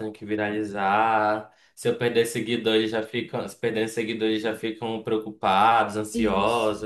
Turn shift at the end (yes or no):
yes